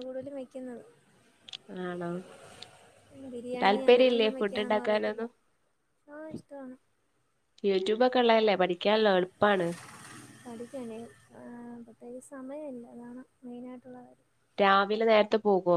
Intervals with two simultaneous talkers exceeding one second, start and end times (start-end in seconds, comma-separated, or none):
3.6-5.2